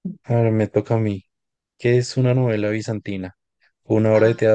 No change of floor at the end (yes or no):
yes